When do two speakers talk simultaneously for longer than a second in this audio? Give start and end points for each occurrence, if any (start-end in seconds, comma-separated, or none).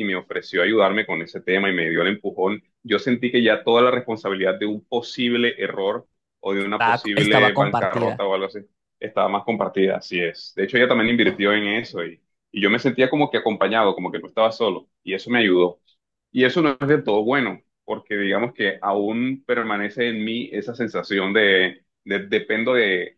6.8-8.2